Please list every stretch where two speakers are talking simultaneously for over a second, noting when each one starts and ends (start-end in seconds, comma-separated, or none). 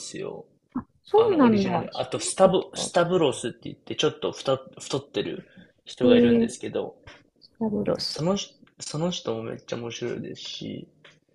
1.1-2.9